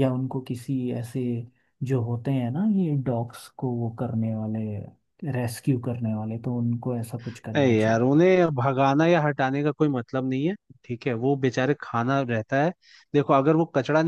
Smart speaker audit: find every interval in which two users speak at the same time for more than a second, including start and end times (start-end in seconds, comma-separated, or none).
none